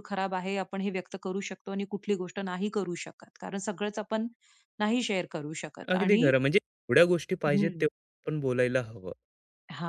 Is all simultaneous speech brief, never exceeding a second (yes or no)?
yes